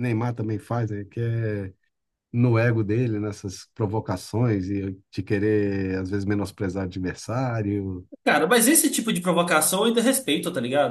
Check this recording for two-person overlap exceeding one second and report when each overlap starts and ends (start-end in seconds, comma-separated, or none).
none